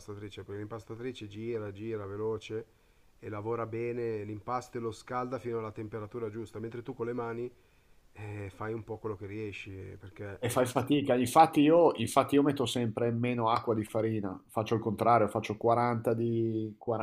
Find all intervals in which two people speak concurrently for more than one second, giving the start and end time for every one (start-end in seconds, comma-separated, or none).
none